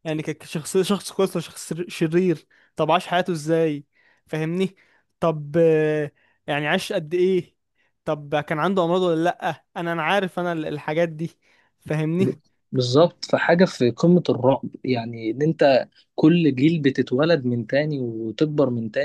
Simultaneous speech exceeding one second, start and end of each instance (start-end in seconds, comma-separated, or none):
none